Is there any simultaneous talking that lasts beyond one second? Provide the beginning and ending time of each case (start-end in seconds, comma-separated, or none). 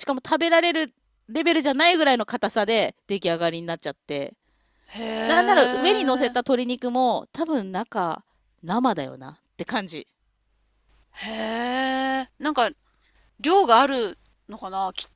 5.2-6.6